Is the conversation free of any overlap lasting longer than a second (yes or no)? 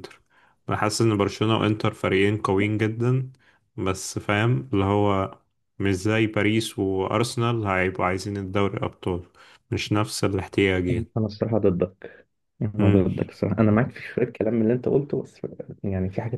yes